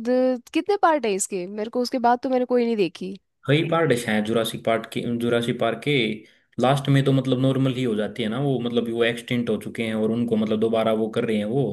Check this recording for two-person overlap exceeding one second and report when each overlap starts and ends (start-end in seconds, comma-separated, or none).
none